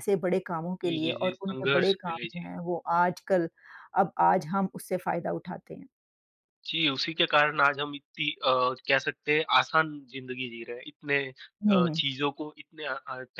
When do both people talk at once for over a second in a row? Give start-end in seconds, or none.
0.8-2.5